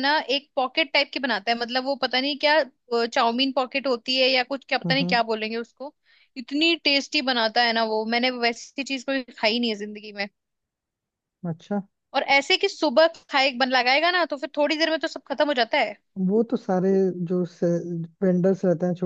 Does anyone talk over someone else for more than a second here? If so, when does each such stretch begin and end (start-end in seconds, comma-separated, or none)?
none